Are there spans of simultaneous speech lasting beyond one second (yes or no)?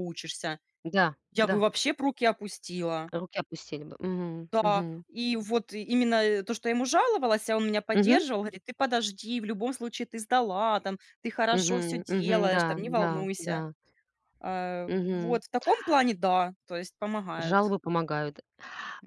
yes